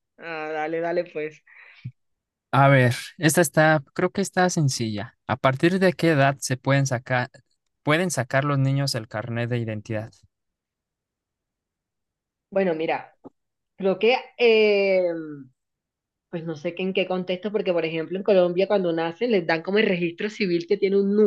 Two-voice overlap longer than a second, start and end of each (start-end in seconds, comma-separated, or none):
none